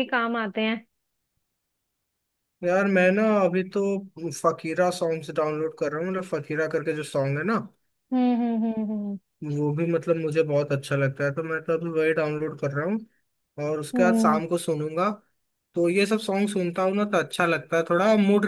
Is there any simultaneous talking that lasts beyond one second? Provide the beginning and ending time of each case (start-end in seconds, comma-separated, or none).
none